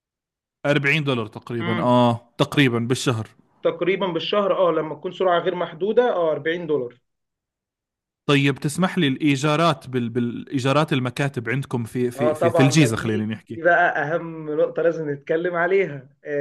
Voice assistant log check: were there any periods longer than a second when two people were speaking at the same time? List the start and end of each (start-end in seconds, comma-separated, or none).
12.2-13.6